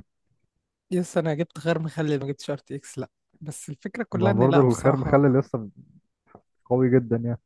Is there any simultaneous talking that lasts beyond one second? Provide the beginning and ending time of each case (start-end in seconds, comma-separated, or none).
4.1-5.4